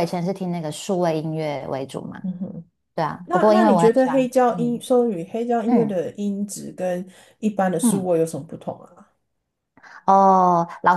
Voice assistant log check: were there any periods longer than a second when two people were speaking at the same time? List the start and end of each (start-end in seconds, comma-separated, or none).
3.2-4.8